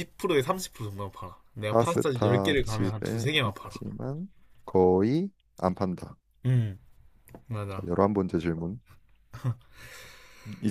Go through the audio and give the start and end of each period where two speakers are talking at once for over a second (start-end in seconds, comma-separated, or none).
1.6-3.8